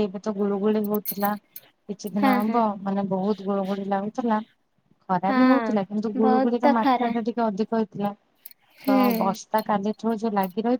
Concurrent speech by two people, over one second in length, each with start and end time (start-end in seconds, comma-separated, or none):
5.3-7.1